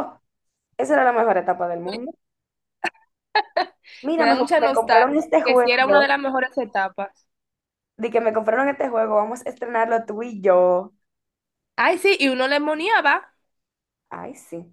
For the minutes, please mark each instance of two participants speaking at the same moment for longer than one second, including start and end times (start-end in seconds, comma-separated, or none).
4.2-6.1